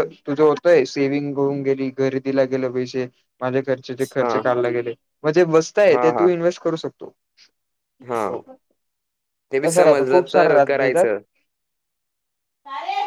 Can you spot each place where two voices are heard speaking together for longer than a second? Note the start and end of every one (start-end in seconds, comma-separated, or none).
9.7-11.1